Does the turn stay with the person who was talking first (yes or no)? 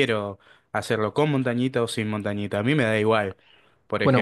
no